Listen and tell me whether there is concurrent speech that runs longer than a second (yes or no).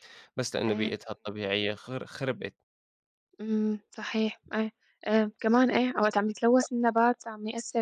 no